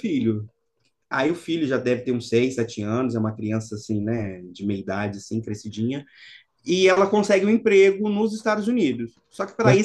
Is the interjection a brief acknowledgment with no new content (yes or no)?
yes